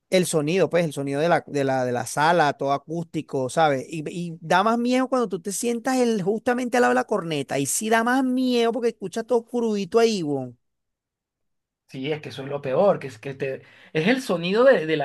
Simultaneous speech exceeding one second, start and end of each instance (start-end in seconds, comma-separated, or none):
none